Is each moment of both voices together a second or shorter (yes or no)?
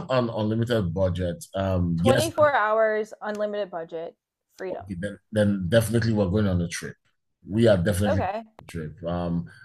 yes